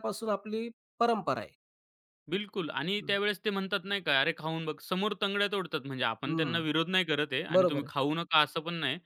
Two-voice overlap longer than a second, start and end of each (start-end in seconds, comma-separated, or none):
none